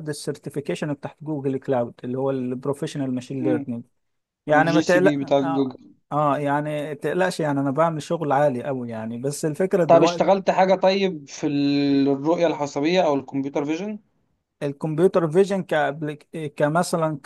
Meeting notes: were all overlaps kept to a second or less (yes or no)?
no